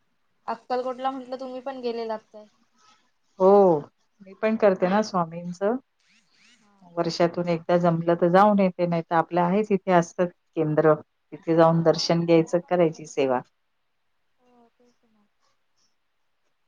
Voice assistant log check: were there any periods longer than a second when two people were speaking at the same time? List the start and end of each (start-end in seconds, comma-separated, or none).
11.7-13.3